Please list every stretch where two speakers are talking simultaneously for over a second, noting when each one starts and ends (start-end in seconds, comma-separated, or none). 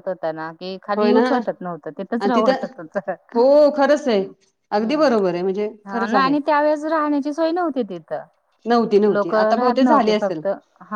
9.1-10.4